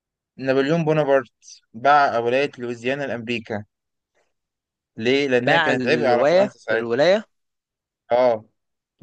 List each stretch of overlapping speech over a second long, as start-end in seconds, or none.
5.4-7.0